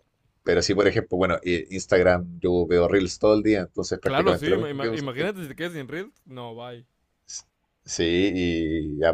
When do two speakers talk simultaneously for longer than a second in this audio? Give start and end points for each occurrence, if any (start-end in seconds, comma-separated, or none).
4.0-5.3